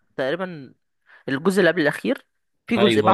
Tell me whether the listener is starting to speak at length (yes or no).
yes